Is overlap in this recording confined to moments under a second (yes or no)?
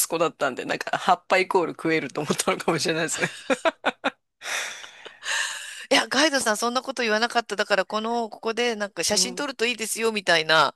yes